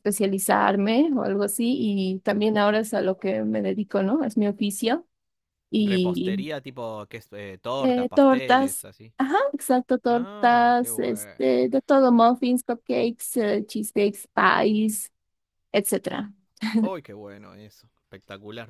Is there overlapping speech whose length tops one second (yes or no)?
yes